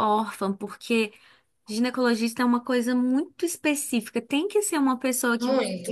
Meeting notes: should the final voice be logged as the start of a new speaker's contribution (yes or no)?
no